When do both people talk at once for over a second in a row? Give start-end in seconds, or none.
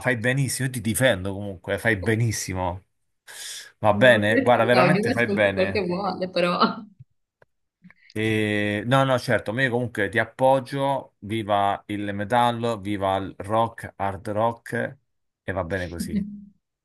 3.9-5.8